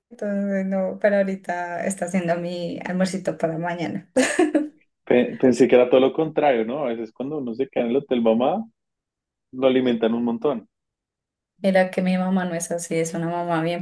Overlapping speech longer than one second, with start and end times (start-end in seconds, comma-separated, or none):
none